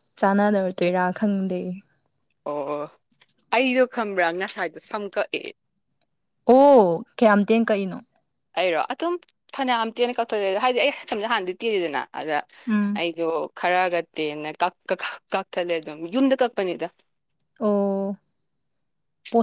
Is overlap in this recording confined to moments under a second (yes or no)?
yes